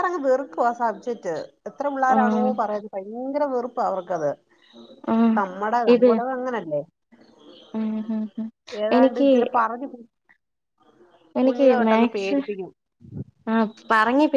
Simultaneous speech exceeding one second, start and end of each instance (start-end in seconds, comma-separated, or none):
none